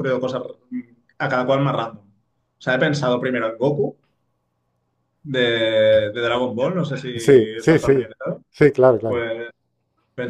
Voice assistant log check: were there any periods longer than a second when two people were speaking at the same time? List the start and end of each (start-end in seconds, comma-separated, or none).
none